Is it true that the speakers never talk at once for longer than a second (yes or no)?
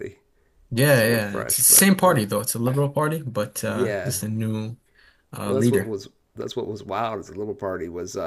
no